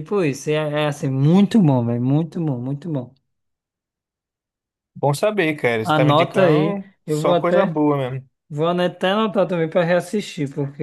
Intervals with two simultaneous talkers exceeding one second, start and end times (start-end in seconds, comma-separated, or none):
5.8-7.8